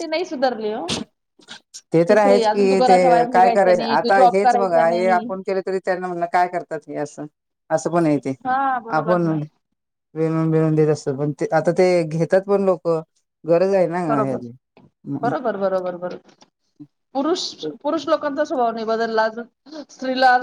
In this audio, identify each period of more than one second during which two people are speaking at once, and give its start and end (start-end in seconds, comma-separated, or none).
2.1-5.3